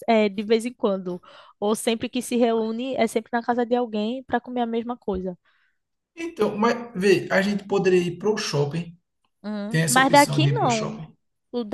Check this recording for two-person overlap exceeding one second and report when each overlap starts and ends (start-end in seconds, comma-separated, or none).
9.7-11.0